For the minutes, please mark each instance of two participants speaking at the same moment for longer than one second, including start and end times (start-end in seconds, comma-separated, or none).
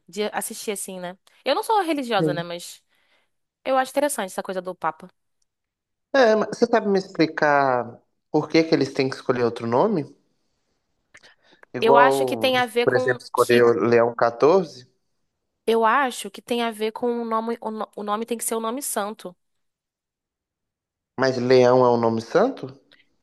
11.8-13.7